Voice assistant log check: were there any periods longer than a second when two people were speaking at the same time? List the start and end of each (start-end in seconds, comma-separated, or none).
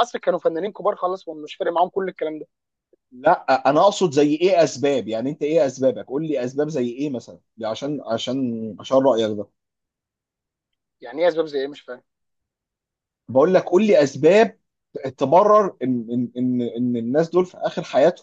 none